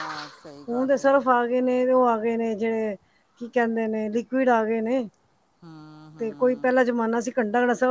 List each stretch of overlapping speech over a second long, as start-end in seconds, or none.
none